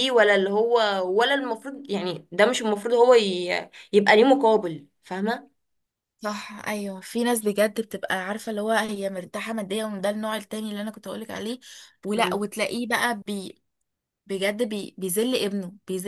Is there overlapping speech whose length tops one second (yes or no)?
no